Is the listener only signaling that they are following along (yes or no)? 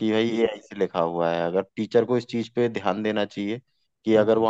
yes